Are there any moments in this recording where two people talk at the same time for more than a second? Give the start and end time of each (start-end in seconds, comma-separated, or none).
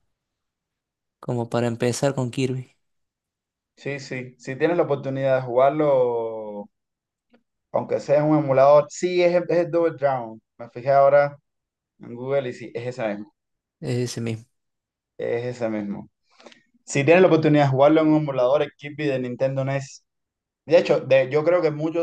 none